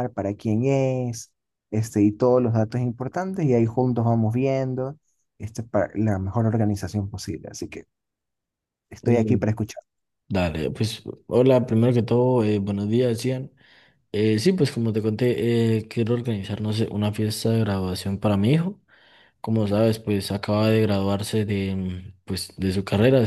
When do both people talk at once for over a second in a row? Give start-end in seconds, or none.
none